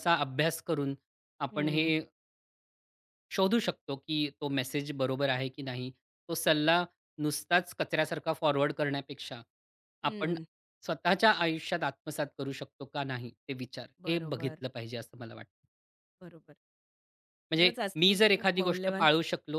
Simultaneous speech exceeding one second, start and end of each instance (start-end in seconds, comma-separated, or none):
17.6-19.1